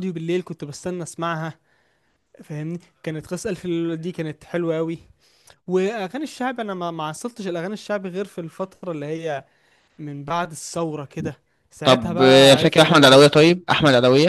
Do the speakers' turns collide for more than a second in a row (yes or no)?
yes